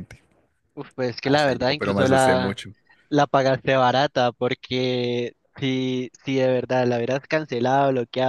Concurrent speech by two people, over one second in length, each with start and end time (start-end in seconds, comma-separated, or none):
1.2-2.6